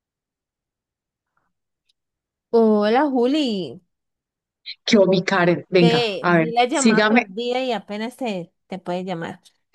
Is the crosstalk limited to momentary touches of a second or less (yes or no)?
no